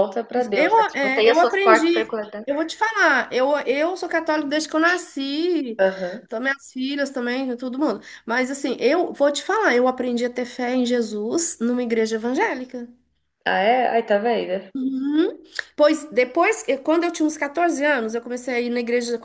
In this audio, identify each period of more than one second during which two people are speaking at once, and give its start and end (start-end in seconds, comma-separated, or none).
0.5-2.5